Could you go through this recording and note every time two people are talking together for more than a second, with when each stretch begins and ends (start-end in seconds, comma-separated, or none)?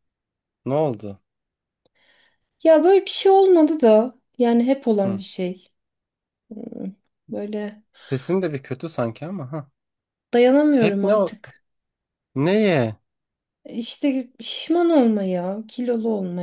none